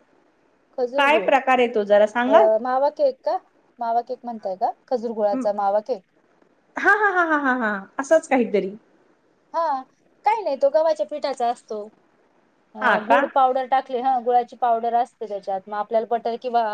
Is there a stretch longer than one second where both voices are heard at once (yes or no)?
no